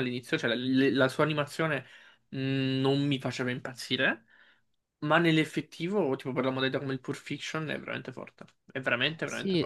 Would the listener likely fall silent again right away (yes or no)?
no